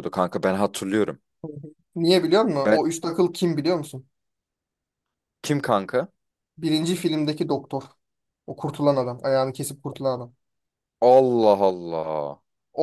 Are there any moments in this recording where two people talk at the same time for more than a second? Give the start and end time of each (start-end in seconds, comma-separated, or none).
none